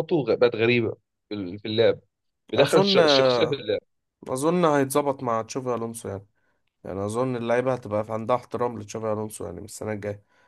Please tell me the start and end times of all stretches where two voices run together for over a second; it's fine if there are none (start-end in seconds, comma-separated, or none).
none